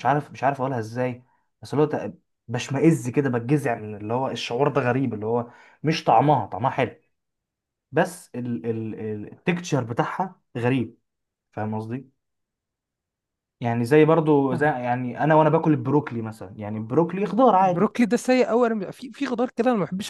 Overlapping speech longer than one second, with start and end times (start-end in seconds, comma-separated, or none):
none